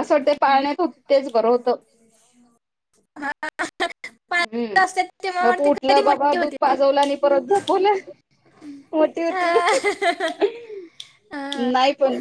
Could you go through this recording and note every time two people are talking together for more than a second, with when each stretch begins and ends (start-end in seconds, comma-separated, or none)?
5.4-6.7